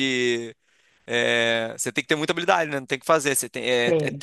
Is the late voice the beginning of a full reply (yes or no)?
no